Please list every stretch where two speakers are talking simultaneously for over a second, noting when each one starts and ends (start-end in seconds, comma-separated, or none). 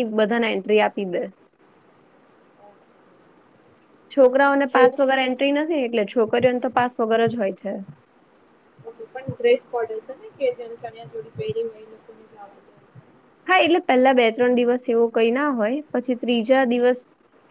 none